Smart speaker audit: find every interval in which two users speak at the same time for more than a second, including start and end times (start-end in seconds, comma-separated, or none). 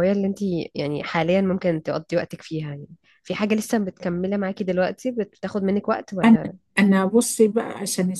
none